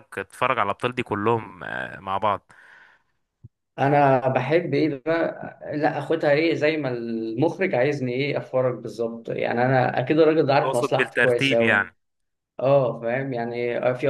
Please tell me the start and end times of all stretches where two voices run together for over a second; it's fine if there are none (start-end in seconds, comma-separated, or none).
10.6-11.9